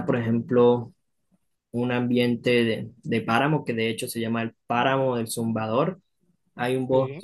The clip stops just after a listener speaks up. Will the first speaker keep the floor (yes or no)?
yes